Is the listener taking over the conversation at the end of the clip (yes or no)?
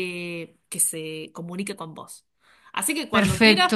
no